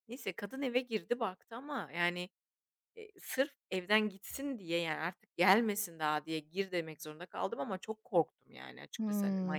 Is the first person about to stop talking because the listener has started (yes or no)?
yes